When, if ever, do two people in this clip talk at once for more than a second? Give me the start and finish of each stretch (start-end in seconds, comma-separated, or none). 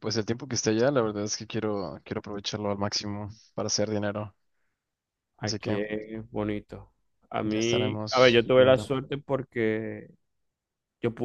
7.4-8.9